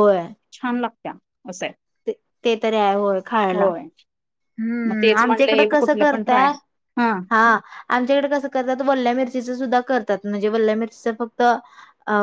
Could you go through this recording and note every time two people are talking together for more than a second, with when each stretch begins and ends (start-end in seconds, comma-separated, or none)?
4.9-6.5